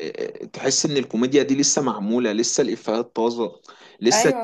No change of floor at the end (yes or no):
yes